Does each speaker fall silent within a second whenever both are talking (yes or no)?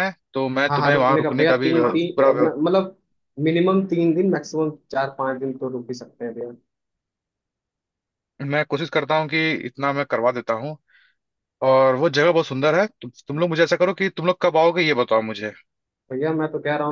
no